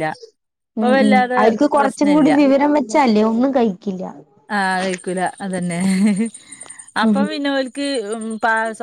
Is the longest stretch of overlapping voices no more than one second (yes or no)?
yes